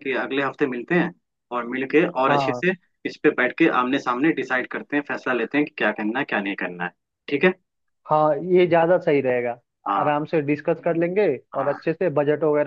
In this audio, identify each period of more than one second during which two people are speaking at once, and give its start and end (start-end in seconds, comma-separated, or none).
none